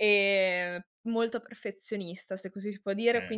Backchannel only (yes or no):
yes